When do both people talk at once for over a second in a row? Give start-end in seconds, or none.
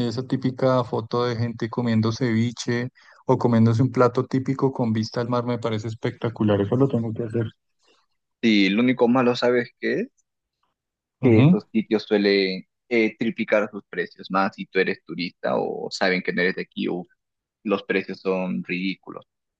none